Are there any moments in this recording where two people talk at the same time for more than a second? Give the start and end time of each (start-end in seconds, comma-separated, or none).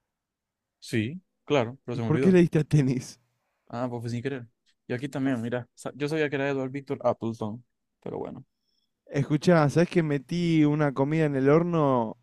none